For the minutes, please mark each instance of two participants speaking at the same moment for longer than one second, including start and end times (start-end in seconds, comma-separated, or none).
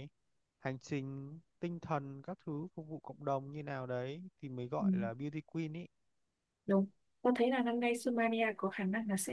none